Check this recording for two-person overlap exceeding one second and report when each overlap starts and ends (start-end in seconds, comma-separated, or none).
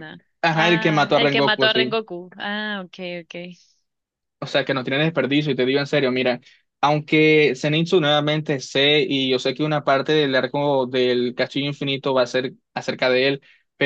0.6-2.0